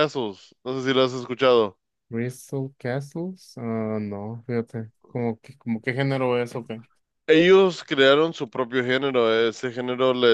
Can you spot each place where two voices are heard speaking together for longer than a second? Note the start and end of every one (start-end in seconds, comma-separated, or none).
none